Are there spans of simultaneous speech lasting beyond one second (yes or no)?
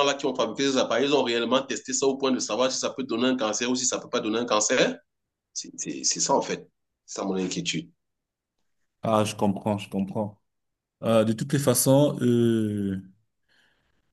no